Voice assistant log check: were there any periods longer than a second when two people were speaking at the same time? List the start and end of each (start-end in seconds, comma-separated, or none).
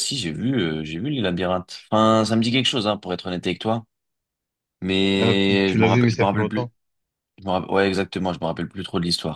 5.2-6.7